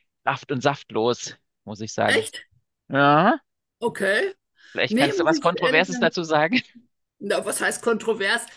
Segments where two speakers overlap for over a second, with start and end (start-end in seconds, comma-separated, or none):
4.9-6.2